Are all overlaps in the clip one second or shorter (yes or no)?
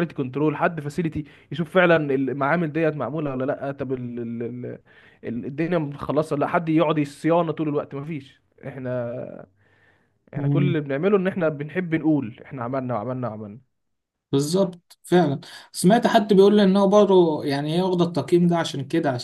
yes